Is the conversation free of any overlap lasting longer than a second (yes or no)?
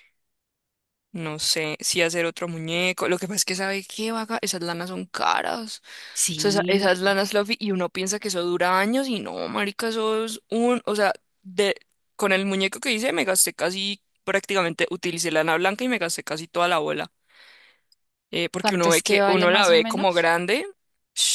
no